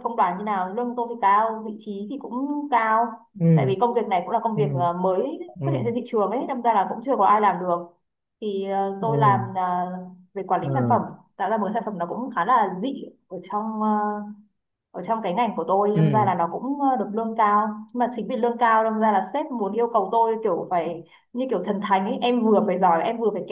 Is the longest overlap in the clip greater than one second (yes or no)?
no